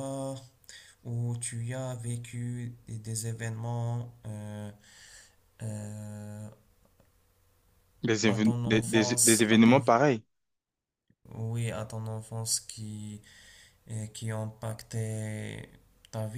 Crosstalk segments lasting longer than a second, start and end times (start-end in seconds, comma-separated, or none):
8.3-9.8